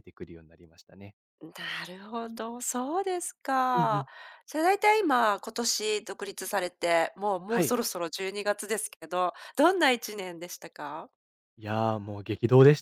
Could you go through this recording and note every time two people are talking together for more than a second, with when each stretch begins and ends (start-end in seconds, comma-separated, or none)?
none